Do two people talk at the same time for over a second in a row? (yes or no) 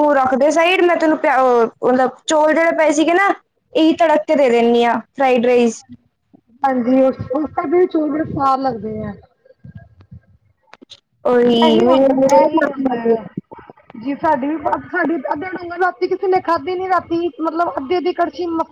yes